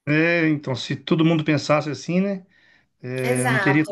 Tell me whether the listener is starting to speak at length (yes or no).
no